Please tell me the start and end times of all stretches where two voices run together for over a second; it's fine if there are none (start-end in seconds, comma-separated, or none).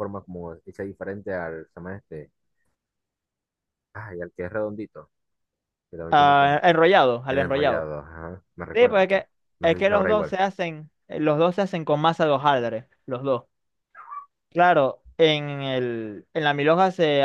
8.7-10.4